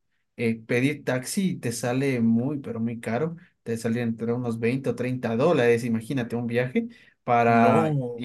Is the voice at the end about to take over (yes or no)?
no